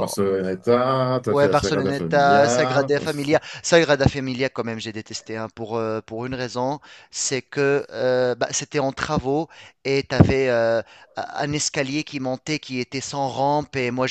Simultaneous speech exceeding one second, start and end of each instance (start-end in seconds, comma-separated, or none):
1.3-2.9